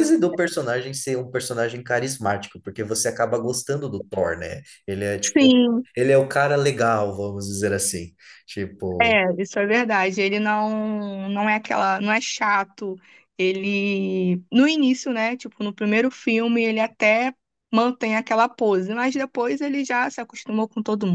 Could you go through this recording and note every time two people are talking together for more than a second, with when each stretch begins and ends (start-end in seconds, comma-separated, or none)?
none